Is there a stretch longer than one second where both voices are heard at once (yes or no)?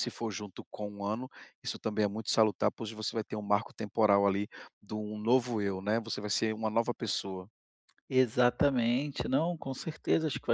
no